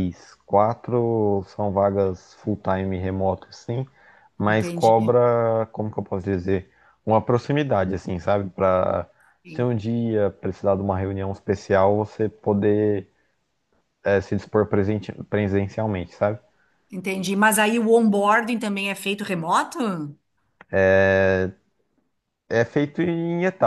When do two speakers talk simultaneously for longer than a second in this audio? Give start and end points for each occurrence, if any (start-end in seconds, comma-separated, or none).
none